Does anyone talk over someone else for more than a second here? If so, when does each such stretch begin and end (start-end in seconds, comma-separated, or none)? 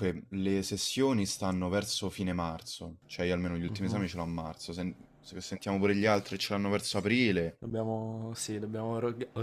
none